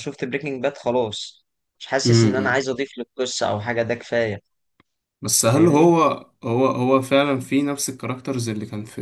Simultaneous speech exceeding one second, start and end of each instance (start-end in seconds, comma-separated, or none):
none